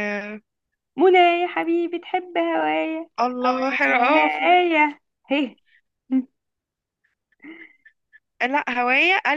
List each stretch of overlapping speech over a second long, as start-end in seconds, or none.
none